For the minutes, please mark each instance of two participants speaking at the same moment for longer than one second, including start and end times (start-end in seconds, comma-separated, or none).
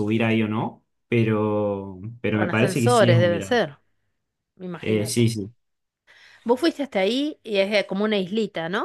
2.3-3.6